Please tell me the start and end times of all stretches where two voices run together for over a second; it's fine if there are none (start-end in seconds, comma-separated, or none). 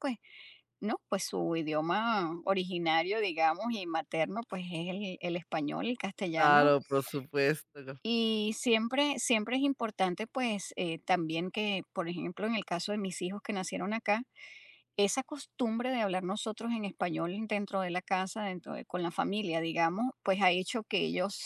none